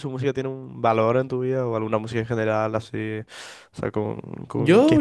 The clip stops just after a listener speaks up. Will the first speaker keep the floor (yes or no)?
no